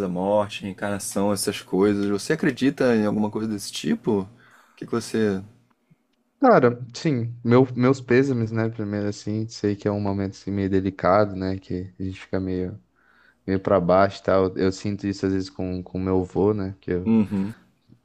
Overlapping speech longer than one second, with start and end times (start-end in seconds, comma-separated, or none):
none